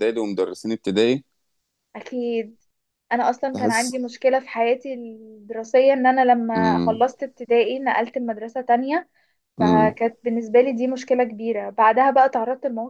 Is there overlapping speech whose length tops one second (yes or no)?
no